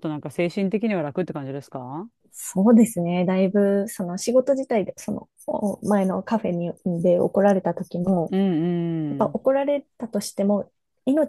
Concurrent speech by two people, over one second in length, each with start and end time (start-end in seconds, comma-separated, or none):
none